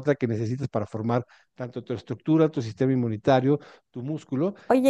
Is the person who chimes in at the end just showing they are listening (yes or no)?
no